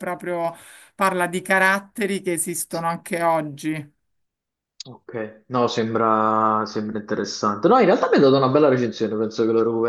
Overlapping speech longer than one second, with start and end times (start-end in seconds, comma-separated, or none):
none